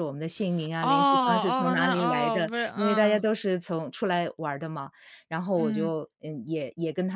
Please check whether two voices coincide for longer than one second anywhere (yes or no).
yes